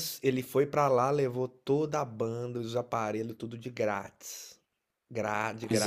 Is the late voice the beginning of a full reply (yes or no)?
no